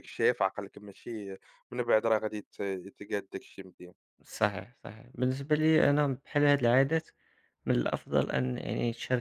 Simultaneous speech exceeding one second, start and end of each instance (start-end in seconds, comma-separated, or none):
none